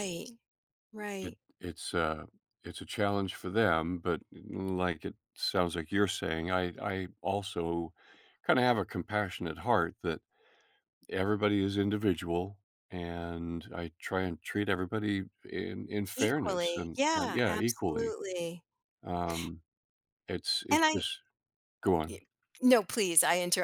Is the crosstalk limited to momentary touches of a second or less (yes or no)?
no